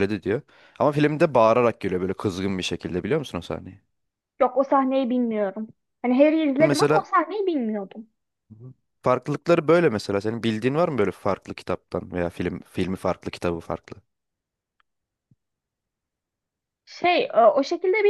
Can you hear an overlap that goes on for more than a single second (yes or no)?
no